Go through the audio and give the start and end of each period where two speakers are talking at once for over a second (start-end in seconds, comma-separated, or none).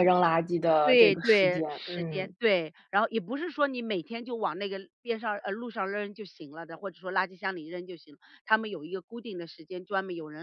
0.8-2.3